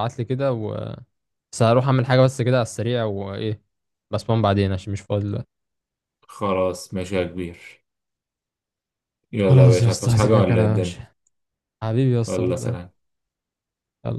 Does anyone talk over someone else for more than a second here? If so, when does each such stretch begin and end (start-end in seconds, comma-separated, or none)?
9.5-11.0